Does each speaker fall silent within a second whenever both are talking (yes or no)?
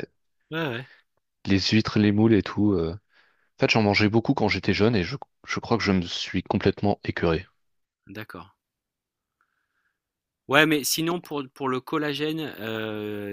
yes